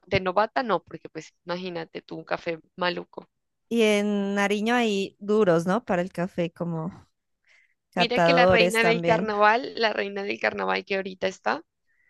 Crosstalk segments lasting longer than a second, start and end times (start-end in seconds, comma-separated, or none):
8.0-9.3